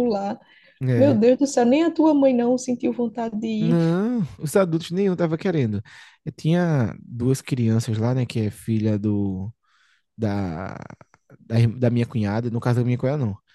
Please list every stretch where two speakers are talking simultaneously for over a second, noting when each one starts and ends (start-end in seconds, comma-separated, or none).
none